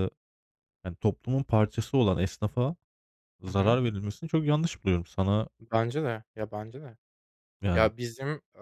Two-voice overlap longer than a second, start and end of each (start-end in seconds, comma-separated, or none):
none